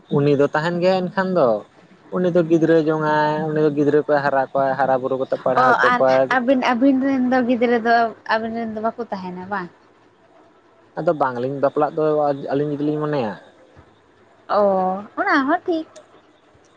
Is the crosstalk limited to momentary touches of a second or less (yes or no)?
yes